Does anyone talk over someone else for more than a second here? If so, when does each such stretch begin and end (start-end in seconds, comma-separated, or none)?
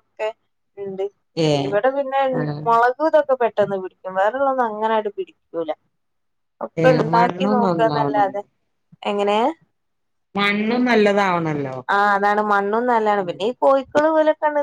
6.8-8.4